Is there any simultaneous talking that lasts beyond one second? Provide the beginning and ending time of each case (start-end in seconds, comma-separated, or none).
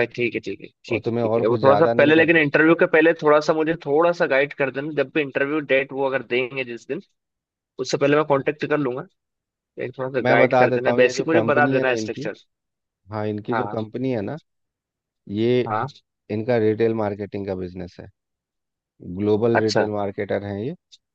0.9-2.4, 10.2-12.3